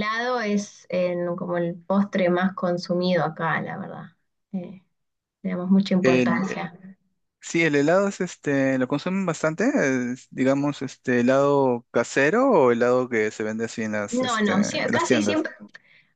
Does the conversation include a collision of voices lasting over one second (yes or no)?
yes